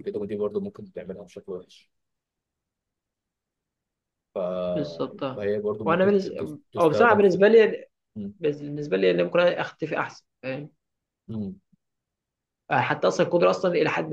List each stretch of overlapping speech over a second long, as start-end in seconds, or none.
5.3-7.4